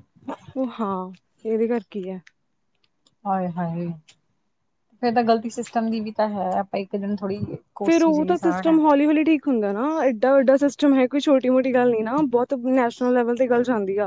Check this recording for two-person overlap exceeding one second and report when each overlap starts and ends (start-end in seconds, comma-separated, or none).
7.8-9.1